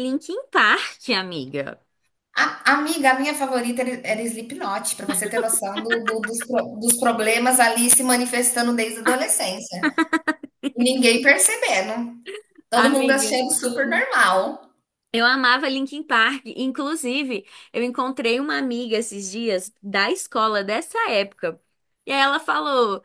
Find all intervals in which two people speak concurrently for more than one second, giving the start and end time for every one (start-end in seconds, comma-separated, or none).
12.7-14.1